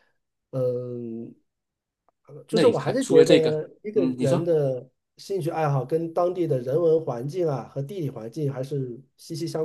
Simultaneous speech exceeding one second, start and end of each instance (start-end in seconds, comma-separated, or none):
2.5-4.5